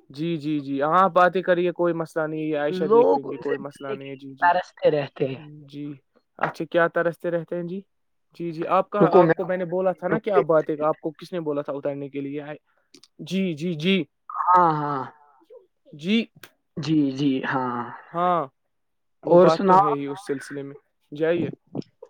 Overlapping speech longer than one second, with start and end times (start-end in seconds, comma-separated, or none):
2.9-4.5